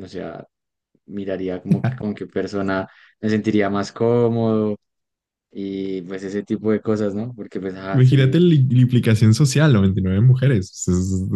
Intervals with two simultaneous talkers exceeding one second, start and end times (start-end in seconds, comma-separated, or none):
none